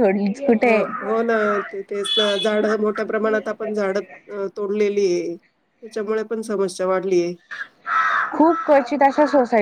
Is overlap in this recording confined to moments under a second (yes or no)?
yes